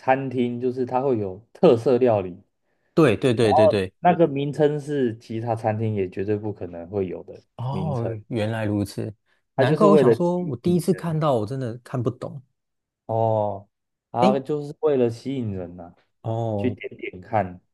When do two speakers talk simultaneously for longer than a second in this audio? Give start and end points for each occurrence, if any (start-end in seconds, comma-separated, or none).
9.6-11.2